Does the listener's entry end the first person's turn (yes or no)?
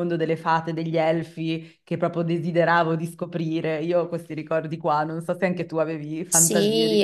yes